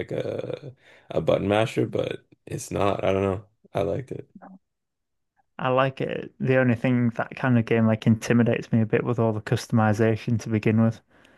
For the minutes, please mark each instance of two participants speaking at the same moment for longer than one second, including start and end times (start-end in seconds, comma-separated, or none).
none